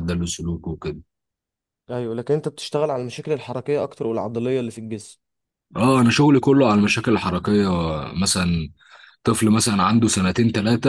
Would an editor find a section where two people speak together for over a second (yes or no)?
no